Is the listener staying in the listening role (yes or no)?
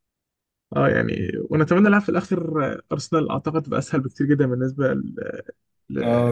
no